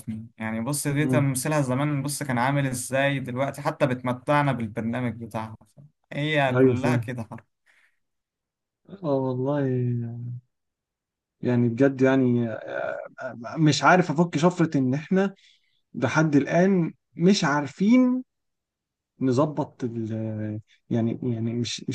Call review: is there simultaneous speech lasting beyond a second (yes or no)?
no